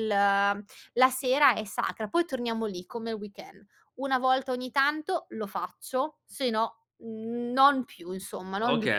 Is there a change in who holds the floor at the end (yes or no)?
yes